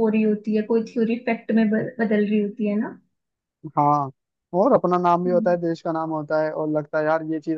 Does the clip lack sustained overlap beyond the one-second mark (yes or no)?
yes